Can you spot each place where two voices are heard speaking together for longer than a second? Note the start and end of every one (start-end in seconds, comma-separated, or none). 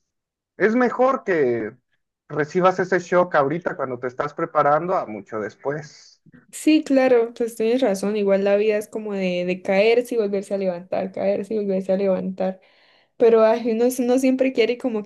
none